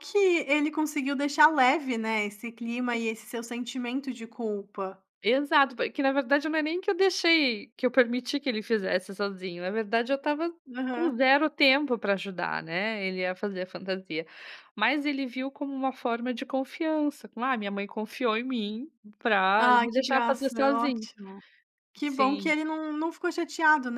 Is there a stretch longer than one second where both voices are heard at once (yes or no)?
yes